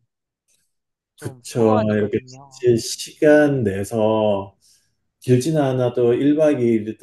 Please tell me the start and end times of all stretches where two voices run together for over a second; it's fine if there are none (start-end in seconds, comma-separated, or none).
1.2-2.7